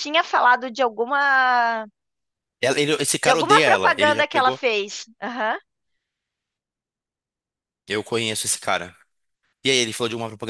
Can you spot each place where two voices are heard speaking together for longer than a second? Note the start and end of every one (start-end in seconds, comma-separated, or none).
3.2-4.6